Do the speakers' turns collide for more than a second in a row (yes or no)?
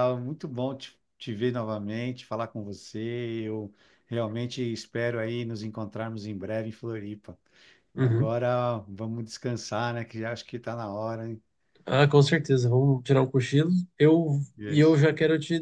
no